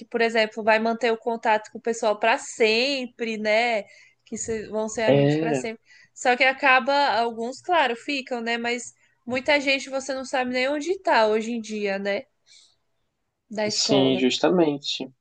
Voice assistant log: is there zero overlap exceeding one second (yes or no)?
yes